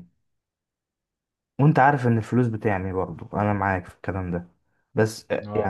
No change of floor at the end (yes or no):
no